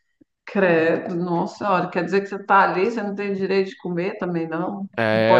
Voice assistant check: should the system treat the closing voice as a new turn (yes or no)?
yes